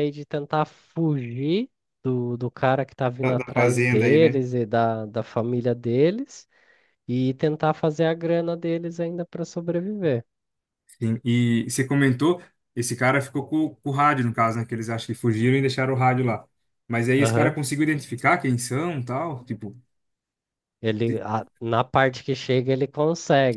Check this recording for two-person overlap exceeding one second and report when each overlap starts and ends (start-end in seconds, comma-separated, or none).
3.2-4.4